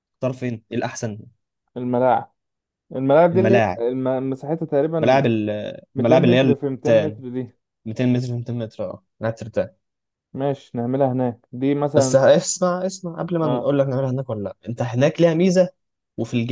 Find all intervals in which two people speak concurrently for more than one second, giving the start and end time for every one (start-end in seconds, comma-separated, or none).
6.0-7.2